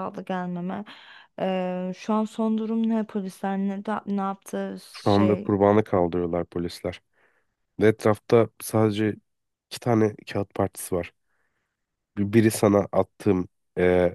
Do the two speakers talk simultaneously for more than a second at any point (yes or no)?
no